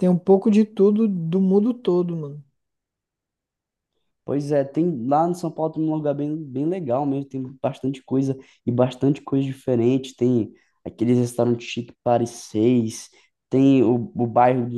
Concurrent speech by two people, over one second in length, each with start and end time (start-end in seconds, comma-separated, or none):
none